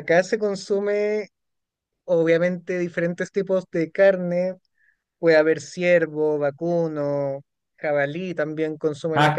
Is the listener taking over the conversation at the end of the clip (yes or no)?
no